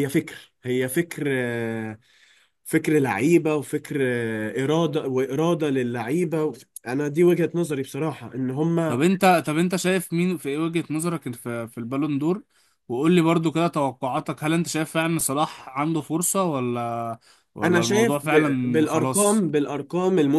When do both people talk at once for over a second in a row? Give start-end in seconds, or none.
17.6-19.5